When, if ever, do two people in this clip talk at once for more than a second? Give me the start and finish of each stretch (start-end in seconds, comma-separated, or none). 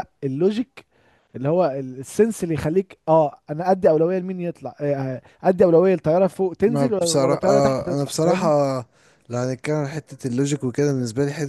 6.7-8.5